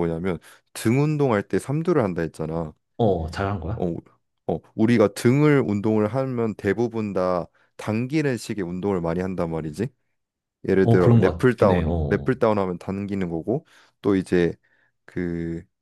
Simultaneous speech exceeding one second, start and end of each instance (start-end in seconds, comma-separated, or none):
10.8-12.3